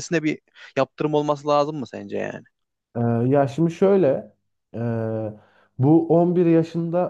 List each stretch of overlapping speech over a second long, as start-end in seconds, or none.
none